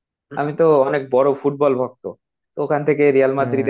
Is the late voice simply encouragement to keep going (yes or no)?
yes